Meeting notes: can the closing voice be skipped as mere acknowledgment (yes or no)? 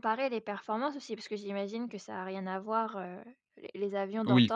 yes